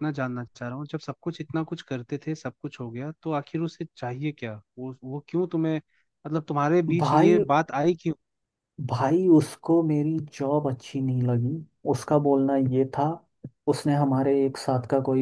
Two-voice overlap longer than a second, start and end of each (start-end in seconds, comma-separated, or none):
none